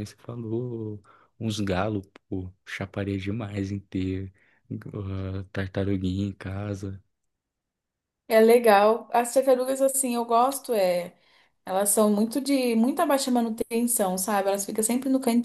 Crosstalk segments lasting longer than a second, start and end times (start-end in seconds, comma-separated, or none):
none